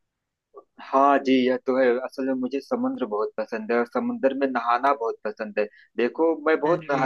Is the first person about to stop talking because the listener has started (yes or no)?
no